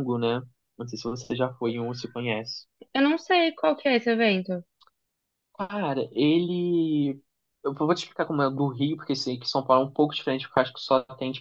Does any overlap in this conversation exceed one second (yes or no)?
no